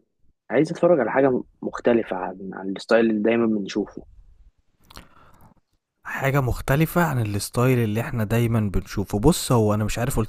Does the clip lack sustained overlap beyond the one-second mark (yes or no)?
yes